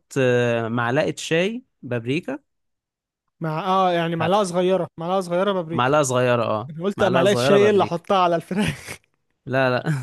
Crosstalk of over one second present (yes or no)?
yes